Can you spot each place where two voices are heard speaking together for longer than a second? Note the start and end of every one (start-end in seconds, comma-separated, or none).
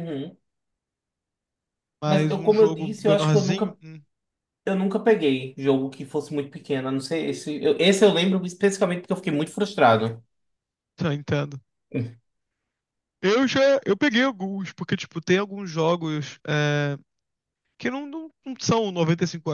2.0-3.8